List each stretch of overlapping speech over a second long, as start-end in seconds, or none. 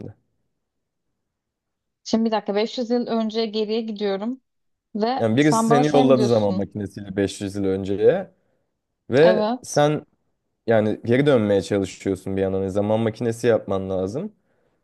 5.2-6.7